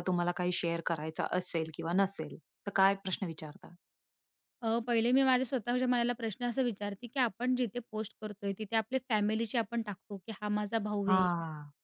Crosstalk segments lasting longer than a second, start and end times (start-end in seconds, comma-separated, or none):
none